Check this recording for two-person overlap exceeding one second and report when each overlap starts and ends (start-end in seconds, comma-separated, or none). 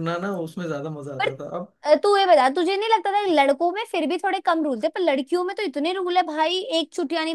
none